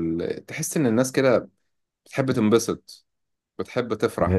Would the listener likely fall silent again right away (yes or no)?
no